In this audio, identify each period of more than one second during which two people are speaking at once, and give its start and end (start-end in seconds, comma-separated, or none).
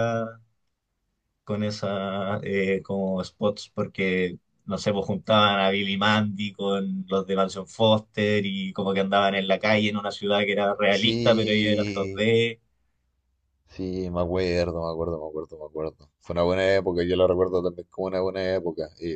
10.9-12.2